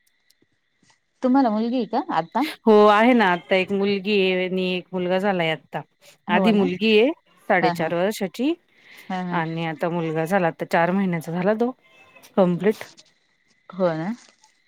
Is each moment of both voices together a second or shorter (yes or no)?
yes